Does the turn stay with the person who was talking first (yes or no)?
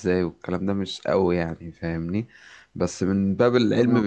yes